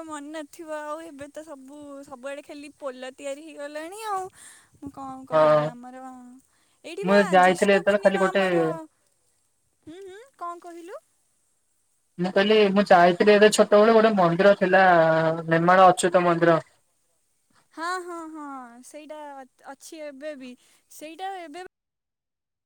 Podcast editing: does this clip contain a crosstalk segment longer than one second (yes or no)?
yes